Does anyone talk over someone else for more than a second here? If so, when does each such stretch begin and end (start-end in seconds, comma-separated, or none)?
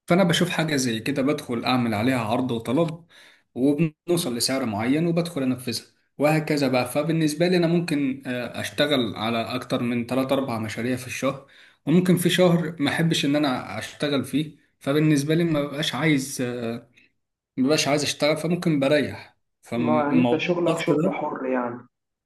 19.8-21.2